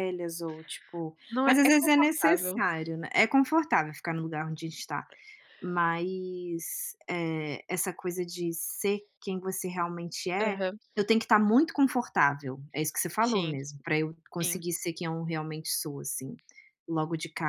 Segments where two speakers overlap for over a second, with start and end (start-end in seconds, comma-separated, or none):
1.3-2.6